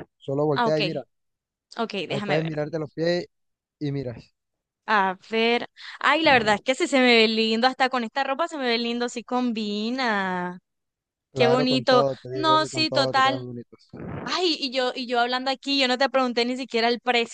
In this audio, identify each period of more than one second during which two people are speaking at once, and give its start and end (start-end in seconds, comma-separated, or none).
11.3-13.4